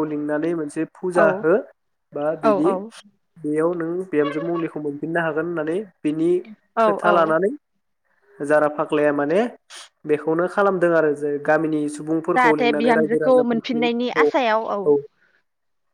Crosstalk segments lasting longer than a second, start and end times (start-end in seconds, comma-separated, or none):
12.4-14.3